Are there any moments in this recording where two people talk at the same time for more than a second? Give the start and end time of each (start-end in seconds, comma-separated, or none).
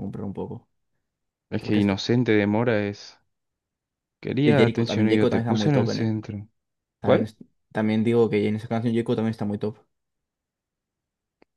4.4-6.1